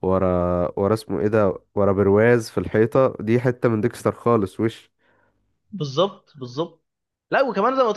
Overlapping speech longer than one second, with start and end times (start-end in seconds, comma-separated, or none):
none